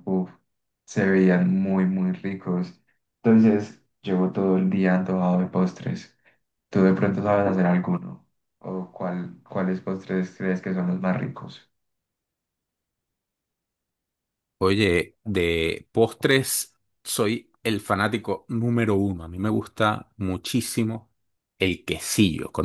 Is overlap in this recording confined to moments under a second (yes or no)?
yes